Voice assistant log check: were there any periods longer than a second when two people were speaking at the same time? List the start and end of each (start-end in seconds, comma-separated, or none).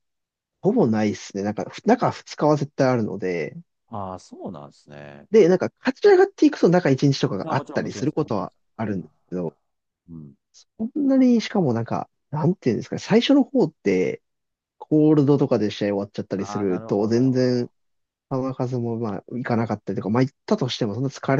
7.4-9.1, 16.4-17.7